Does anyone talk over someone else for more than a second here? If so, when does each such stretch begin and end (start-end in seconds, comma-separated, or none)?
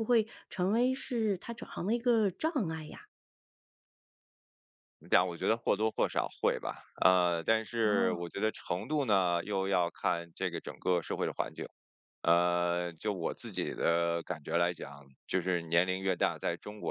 none